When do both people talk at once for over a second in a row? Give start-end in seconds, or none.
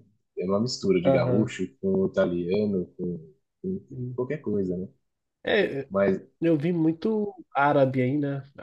none